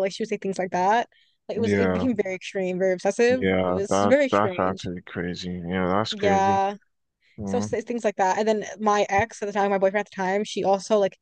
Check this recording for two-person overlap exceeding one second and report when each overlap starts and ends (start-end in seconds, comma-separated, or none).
3.3-4.9